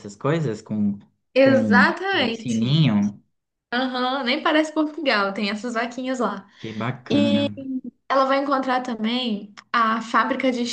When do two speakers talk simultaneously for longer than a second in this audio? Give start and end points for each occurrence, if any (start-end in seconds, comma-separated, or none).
1.4-2.8